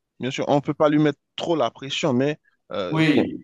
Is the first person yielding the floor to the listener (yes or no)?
no